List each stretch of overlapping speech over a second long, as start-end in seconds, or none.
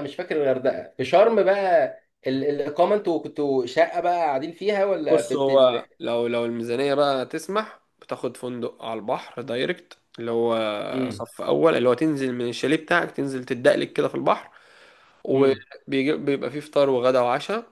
none